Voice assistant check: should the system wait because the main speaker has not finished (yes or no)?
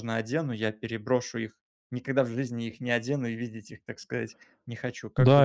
no